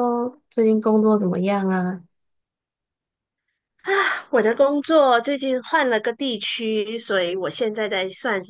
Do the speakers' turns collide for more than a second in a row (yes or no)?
no